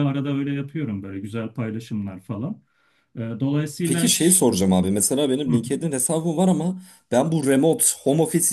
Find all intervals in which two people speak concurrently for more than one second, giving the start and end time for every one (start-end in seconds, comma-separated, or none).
none